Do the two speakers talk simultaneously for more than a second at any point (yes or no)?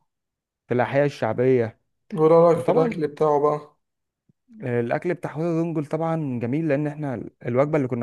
no